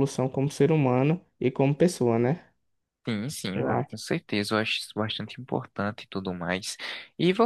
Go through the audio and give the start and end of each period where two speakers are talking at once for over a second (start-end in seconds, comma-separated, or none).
none